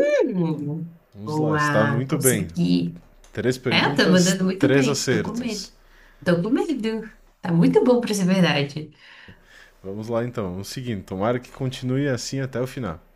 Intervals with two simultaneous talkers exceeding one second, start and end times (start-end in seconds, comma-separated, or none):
1.1-2.5, 3.7-5.7